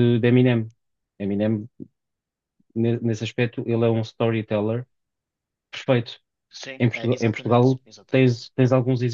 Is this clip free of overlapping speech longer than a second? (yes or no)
no